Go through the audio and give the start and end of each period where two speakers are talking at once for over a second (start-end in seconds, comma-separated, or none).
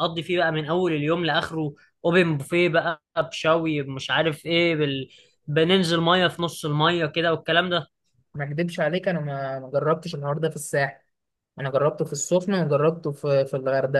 none